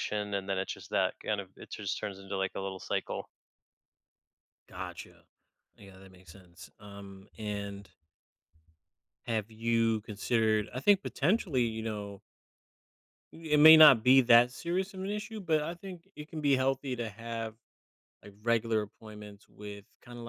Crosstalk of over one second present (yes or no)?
no